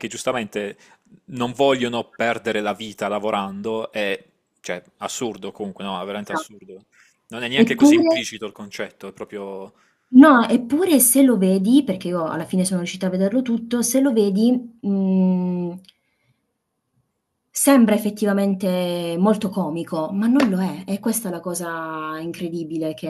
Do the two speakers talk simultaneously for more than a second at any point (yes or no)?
no